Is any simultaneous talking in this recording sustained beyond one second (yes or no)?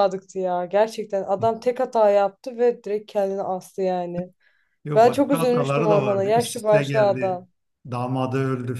yes